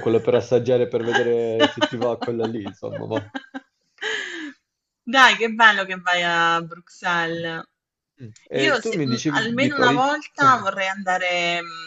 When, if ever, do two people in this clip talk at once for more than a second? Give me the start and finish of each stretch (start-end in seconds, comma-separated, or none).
8.5-10.1